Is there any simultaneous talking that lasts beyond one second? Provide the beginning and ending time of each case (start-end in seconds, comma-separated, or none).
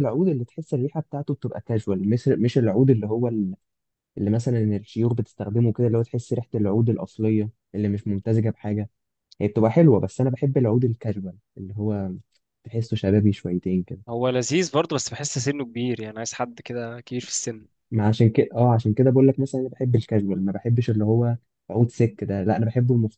none